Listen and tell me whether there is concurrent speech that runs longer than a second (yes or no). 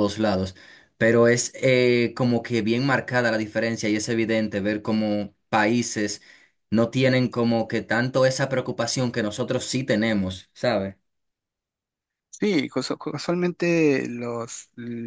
no